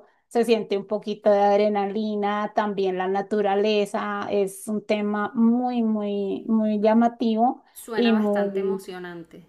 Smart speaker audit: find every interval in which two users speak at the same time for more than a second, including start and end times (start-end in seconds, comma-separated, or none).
7.7-8.9